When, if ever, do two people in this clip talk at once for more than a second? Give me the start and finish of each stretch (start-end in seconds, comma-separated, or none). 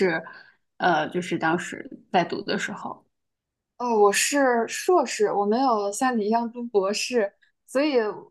none